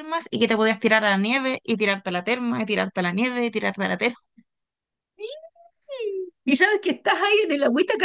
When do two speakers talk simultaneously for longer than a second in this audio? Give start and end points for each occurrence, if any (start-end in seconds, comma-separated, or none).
none